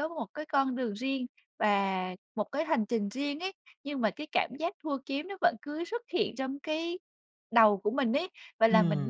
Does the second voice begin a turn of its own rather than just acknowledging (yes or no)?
no